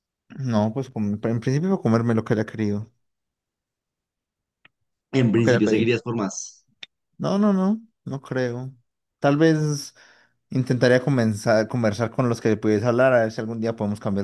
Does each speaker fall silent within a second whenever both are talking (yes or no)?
yes